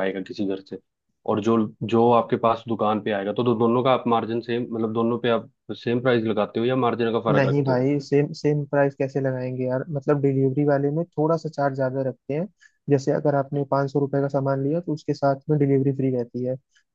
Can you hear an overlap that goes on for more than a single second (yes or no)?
no